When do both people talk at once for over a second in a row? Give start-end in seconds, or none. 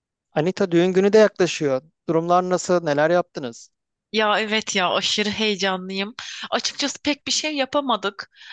none